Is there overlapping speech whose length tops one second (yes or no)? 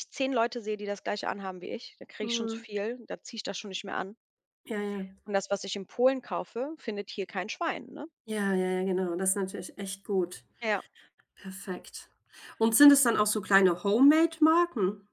no